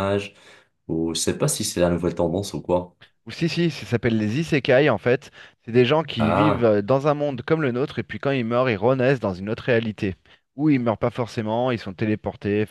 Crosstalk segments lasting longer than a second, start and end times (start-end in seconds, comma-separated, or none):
none